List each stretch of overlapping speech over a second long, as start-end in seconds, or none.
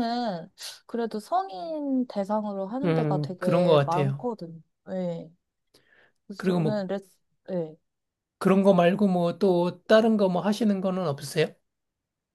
2.8-4.3